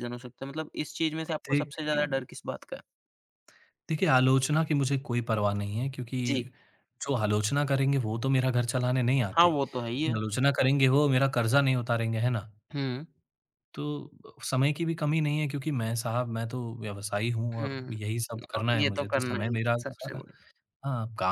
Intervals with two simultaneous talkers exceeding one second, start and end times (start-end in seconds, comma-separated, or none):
18.6-20.2